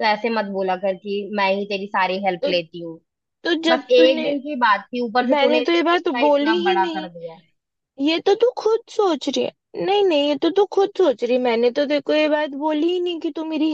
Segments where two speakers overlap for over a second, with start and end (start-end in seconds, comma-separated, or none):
5.3-7.1